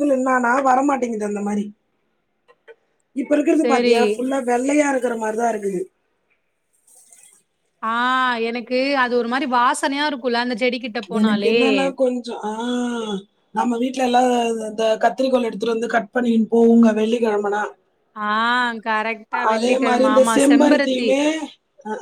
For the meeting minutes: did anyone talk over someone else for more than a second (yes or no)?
yes